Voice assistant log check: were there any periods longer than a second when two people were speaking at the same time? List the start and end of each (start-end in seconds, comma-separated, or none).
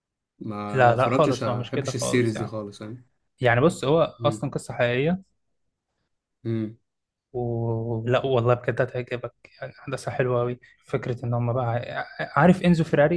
0.7-2.5